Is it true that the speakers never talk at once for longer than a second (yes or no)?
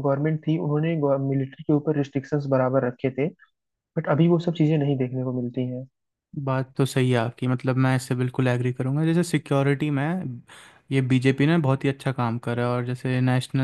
yes